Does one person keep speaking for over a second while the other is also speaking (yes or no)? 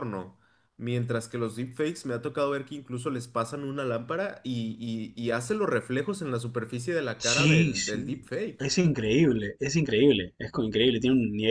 yes